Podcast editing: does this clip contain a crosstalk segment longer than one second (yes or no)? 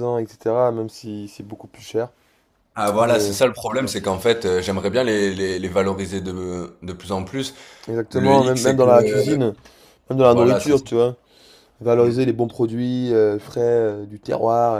yes